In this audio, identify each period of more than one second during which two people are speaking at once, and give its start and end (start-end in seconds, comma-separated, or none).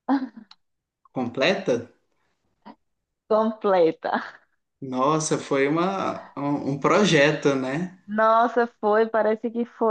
none